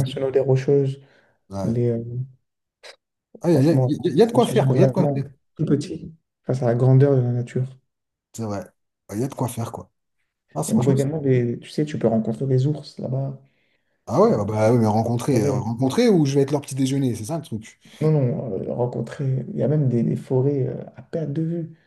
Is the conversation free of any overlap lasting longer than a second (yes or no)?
no